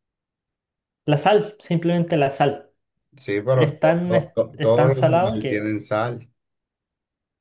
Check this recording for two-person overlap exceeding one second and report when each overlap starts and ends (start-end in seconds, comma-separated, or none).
3.5-5.7